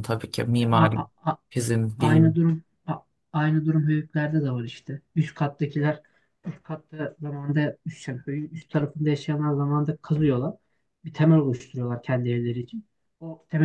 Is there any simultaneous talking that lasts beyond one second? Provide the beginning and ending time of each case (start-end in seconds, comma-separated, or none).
none